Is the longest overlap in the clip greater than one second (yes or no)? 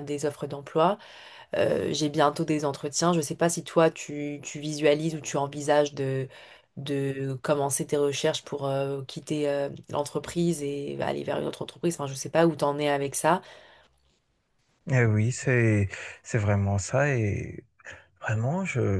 no